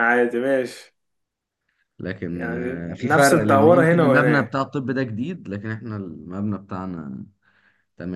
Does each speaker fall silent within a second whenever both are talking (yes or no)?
no